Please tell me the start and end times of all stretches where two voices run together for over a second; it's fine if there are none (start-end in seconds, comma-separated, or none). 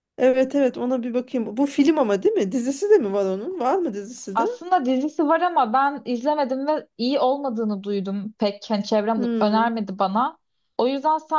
none